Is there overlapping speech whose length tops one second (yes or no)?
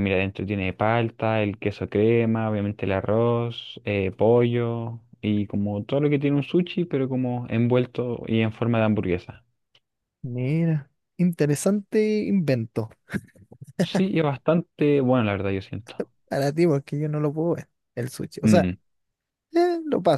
no